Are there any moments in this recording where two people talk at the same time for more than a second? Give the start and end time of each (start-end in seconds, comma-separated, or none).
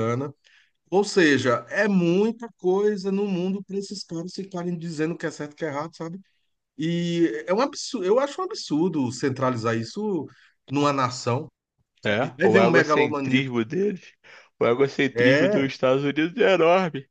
12.0-13.5